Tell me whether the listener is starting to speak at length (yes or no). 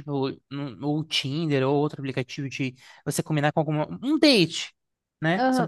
yes